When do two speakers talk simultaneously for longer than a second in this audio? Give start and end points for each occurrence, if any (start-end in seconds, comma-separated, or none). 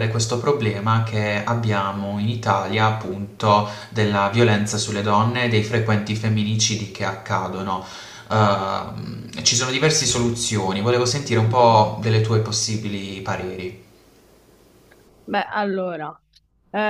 none